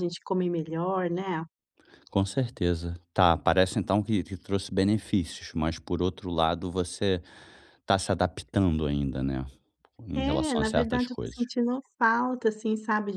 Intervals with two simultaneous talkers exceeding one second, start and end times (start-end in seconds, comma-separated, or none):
10.2-11.4